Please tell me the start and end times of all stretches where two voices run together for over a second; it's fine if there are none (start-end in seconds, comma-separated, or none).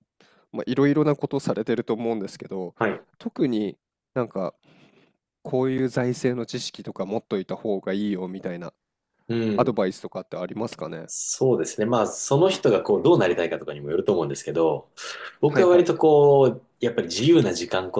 none